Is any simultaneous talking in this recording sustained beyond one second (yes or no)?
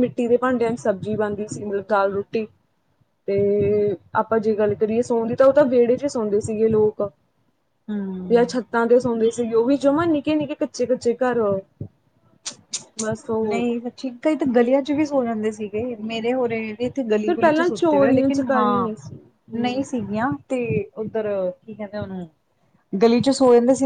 yes